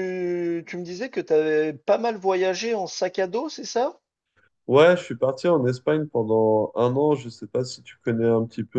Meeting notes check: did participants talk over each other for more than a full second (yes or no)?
no